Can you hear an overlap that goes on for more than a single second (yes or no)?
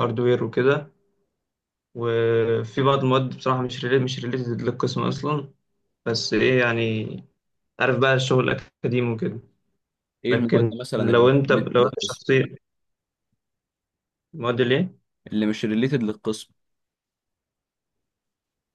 yes